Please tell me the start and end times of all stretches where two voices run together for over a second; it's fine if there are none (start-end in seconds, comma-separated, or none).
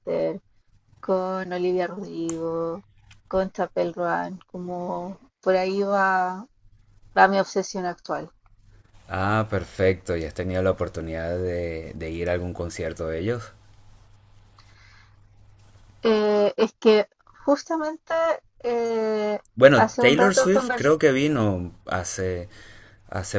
19.6-21.0